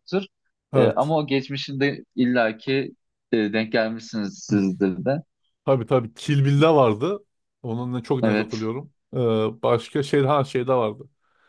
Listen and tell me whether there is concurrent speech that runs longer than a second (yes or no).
no